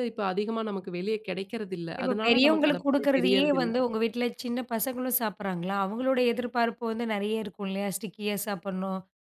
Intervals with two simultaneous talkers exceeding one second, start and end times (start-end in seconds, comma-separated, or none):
2.0-3.7